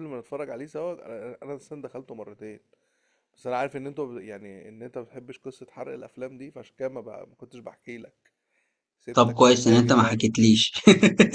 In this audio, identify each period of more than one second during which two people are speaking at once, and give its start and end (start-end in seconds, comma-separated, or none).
9.1-10.5